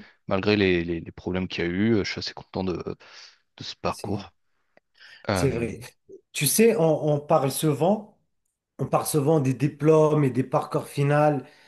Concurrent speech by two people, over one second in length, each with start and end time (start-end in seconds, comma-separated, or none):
none